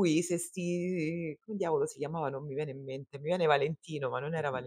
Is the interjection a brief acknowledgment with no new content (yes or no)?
no